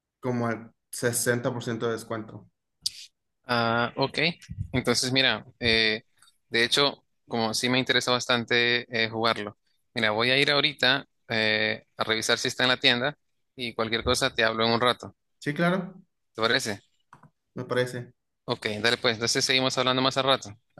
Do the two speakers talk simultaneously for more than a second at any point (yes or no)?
no